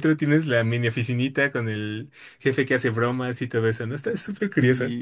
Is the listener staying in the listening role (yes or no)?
no